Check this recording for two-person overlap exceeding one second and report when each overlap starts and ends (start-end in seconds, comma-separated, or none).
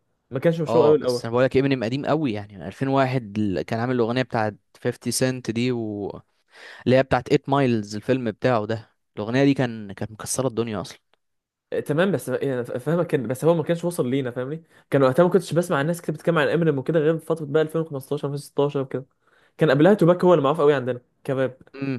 none